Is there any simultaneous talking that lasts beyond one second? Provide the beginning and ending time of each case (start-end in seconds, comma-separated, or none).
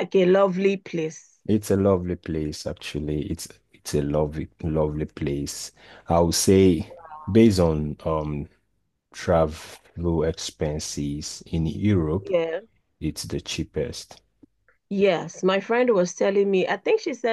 none